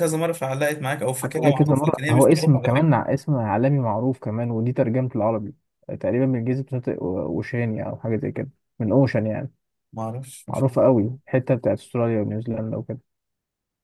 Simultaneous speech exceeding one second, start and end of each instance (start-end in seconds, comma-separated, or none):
1.2-2.9